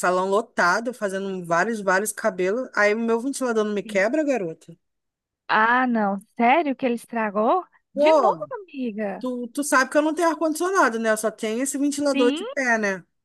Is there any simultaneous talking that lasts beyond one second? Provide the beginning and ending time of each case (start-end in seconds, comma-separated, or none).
none